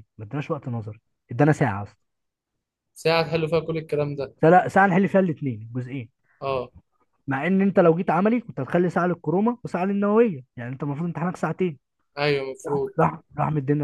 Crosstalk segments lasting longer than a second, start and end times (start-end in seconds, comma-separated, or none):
none